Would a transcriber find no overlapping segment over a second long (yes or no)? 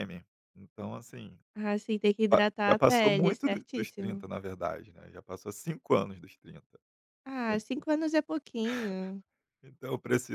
no